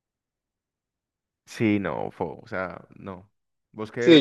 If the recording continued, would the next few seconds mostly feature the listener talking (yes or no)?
yes